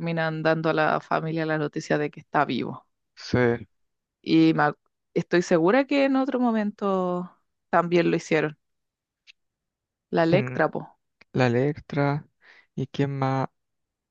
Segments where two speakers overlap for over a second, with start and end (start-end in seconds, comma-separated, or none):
none